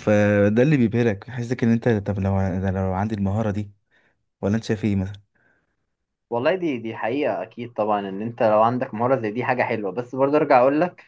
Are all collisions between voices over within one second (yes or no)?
yes